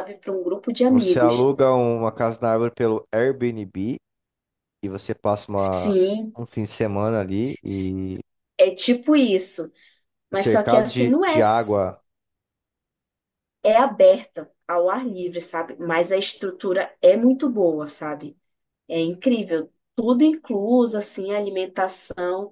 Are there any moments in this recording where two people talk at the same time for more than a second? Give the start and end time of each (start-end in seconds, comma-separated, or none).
10.3-11.8